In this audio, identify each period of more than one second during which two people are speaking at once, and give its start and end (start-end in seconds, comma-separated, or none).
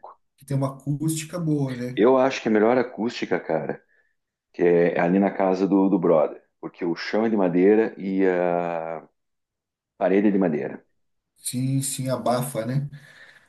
none